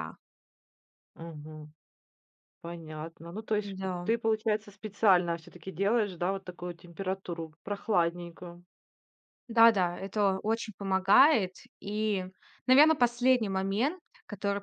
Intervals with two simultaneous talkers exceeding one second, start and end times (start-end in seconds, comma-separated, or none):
none